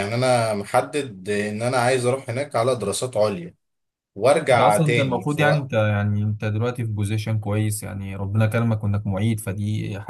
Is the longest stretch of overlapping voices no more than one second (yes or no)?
no